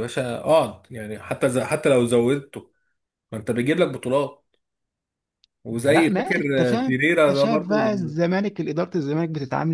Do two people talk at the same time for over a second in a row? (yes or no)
yes